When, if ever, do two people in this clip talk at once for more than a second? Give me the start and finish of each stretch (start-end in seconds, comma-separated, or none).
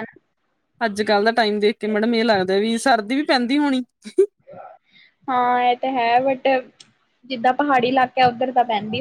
none